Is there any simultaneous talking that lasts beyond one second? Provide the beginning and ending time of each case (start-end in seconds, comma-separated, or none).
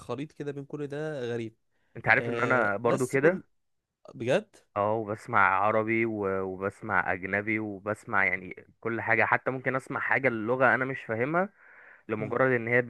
2.2-3.4